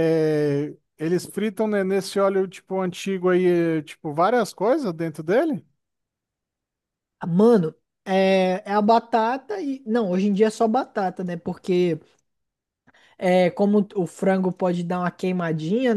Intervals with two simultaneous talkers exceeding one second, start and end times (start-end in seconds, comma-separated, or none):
none